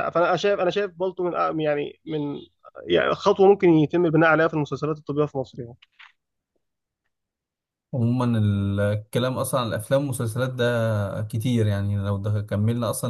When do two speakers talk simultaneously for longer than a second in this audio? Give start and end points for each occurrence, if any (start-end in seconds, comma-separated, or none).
none